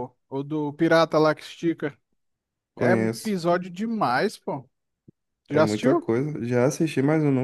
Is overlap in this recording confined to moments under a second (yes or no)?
yes